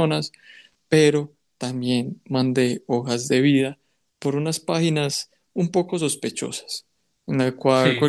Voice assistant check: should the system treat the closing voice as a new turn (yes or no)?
no